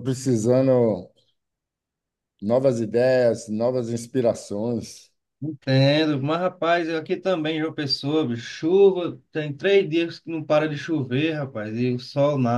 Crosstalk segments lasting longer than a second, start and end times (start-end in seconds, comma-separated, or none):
none